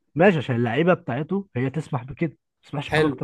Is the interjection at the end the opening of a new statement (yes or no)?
yes